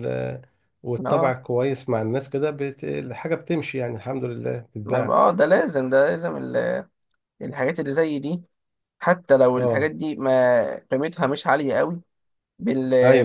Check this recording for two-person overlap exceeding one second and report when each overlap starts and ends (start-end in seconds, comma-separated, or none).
none